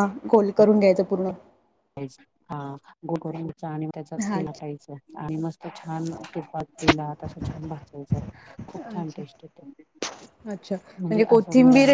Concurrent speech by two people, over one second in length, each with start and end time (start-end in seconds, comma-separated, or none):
none